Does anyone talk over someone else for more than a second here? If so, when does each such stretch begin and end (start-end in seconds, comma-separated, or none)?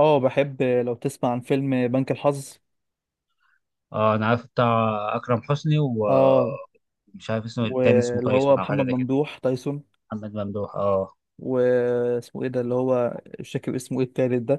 7.6-9.1